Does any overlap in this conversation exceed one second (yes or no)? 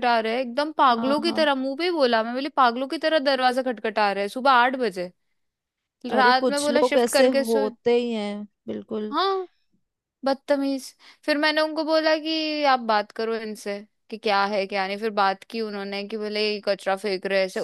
yes